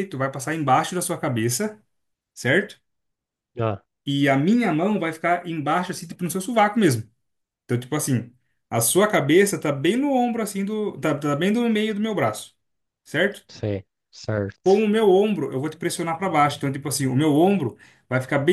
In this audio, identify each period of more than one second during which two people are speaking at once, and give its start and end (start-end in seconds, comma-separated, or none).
none